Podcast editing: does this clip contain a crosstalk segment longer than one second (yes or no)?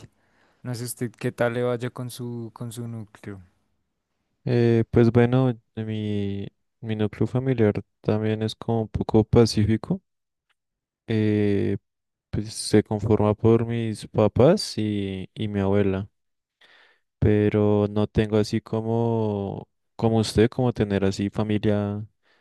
no